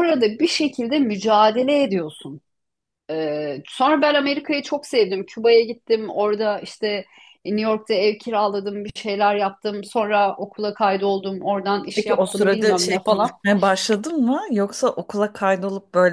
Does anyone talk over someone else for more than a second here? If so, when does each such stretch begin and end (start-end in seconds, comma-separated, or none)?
11.9-13.3